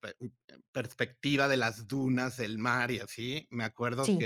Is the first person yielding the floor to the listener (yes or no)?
no